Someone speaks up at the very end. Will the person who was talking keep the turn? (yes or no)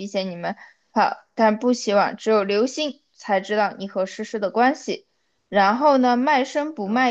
yes